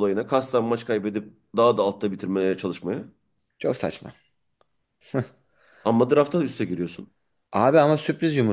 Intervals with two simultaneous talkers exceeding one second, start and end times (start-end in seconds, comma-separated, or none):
none